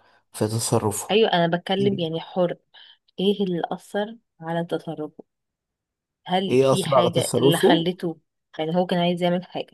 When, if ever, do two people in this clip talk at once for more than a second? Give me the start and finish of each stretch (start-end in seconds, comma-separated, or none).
6.5-7.9